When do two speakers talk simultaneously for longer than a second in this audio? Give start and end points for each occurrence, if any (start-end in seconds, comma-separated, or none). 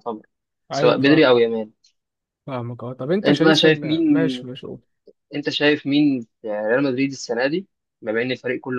3.2-4.5